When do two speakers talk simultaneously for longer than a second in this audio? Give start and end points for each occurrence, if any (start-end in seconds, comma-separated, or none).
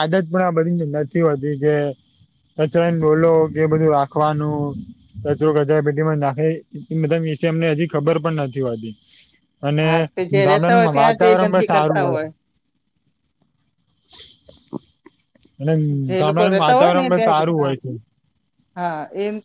10.5-12.0, 16.2-17.7